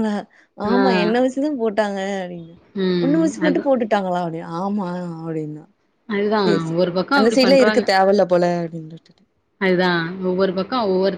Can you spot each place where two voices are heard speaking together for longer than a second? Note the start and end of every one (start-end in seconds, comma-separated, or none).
none